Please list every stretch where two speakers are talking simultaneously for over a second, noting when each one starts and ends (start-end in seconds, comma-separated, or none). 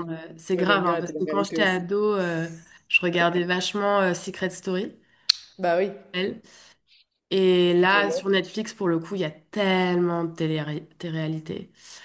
0.5-1.9